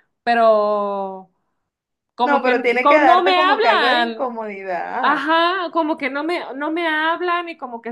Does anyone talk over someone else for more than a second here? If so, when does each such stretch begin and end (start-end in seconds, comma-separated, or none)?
2.2-4.4